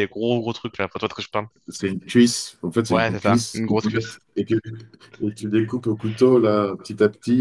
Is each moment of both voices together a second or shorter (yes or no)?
no